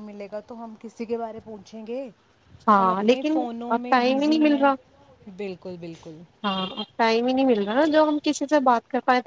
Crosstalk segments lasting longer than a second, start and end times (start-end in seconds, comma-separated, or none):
2.8-4.7